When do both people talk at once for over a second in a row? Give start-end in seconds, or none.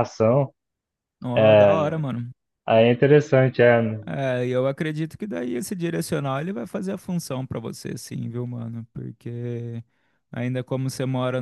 none